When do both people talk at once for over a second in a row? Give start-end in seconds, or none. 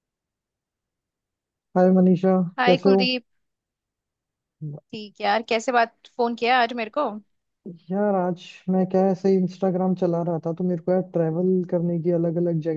none